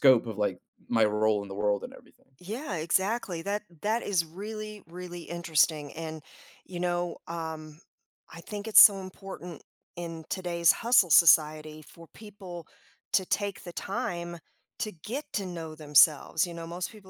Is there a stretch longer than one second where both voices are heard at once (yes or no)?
no